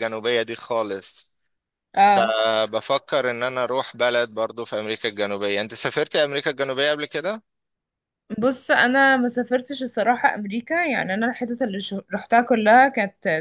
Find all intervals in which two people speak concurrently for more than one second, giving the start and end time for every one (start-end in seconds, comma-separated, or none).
none